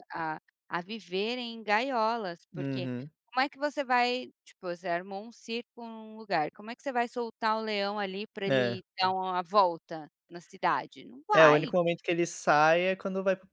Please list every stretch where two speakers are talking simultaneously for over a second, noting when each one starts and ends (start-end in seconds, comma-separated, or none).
none